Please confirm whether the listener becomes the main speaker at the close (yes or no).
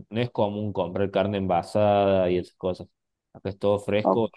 yes